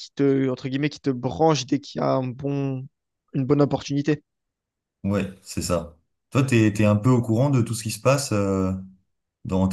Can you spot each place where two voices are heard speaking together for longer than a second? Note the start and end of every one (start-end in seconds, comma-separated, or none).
none